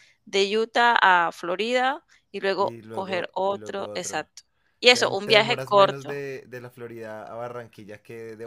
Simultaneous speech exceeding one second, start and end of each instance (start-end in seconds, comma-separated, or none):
2.6-4.3, 4.9-6.1